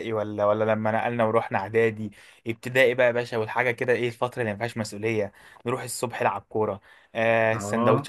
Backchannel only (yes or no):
yes